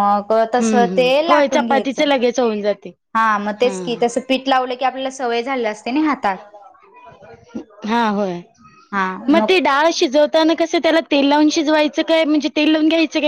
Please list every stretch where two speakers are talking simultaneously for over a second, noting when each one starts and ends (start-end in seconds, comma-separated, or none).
0.6-2.0